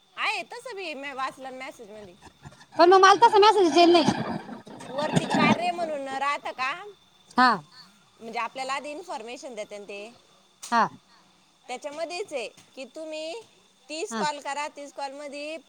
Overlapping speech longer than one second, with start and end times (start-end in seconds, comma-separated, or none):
none